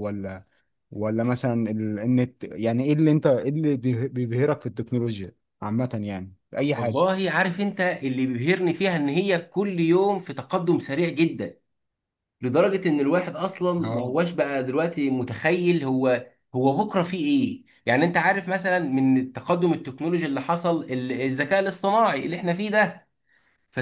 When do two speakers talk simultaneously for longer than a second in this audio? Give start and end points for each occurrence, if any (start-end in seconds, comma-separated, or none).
none